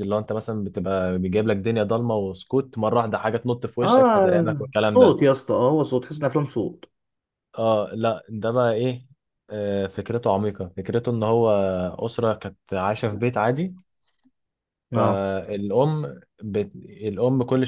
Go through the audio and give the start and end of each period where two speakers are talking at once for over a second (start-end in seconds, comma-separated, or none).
3.8-5.2